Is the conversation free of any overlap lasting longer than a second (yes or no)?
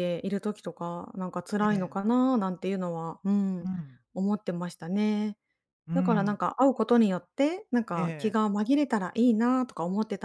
yes